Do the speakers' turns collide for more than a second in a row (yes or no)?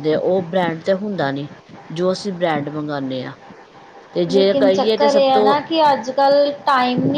yes